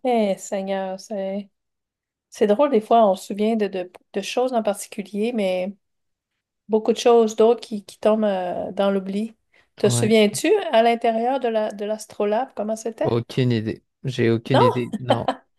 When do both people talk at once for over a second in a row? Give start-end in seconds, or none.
none